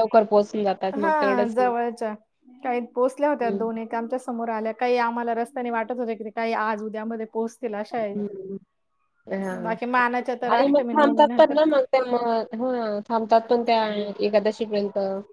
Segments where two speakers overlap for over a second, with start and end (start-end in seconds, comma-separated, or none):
9.6-11.6